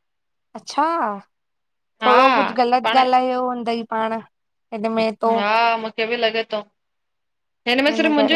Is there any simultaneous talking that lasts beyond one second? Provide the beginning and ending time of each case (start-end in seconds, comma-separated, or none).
none